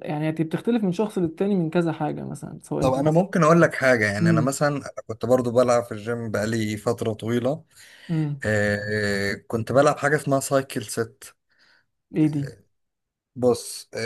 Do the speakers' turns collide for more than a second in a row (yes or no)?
no